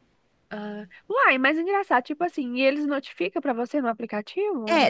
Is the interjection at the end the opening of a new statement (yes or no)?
yes